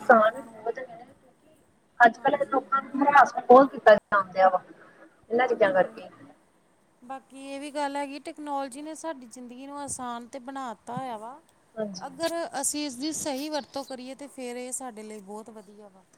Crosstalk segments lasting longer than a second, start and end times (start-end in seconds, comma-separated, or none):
none